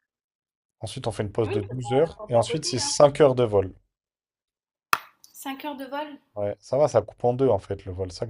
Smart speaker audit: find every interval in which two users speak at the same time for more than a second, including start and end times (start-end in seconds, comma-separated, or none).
1.4-2.9